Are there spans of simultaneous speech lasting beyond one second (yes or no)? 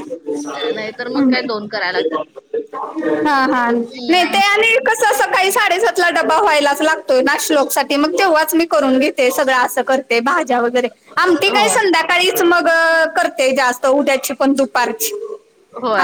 no